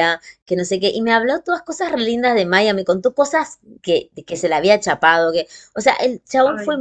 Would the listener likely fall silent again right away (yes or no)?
yes